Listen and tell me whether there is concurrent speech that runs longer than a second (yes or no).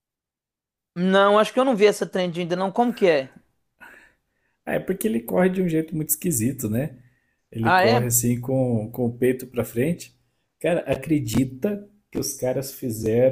no